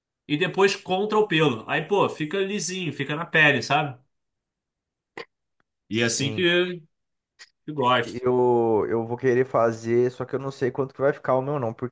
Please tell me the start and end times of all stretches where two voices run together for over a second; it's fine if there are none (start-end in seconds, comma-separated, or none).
none